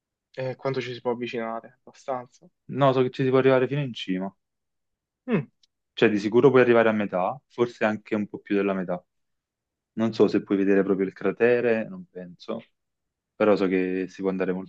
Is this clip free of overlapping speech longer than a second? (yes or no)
yes